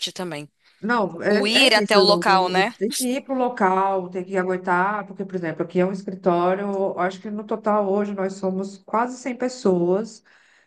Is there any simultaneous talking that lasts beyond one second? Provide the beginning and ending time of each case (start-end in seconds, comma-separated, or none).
1.3-2.8